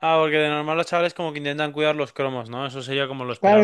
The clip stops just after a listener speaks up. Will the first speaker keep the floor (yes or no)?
no